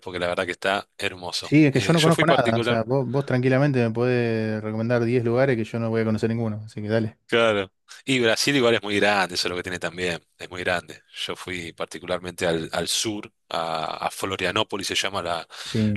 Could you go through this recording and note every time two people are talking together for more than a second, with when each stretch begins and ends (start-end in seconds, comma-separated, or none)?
1.4-2.9